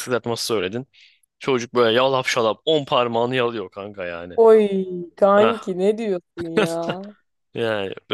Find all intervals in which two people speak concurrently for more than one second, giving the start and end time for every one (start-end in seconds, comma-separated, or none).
none